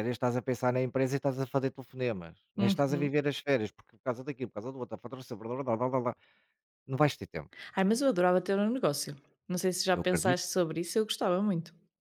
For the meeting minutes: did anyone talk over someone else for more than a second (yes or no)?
no